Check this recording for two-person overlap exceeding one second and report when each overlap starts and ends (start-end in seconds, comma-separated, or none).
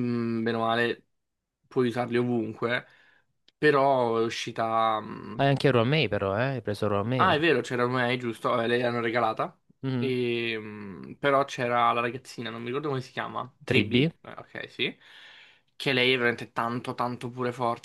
none